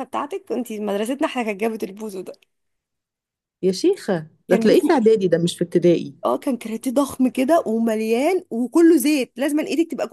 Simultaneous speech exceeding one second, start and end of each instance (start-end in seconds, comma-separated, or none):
none